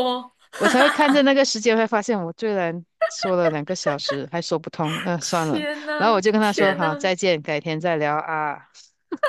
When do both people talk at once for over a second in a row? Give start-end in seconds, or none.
5.2-7.1